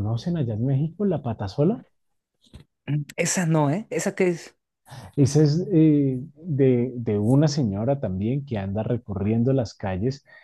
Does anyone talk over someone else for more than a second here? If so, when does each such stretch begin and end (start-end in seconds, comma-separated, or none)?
none